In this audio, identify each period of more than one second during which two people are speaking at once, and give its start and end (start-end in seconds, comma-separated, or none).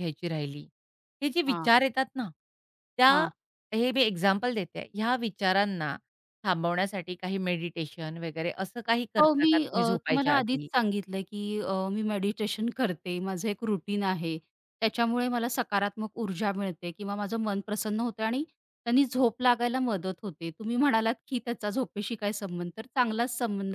9.2-10.7